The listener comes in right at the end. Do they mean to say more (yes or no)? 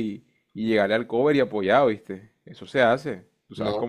yes